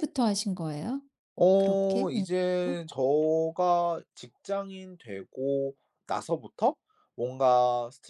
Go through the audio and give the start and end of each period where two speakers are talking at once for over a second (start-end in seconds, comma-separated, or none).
1.6-2.8